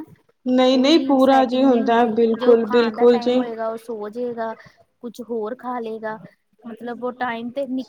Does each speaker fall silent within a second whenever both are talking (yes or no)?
no